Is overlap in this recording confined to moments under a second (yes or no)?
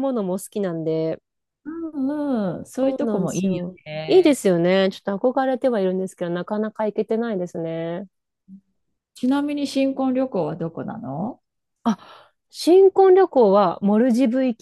no